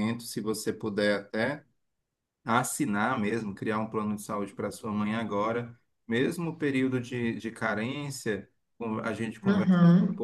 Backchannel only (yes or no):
yes